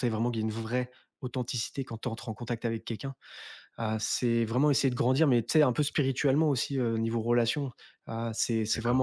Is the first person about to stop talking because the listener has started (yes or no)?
no